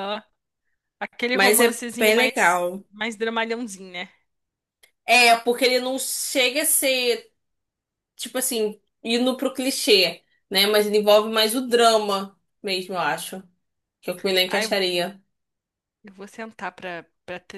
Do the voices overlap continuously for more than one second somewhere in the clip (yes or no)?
yes